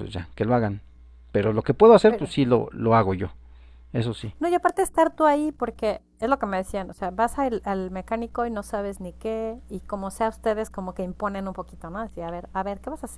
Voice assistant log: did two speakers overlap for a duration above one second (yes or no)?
no